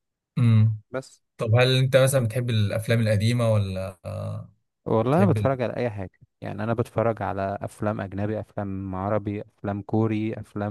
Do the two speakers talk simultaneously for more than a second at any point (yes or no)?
no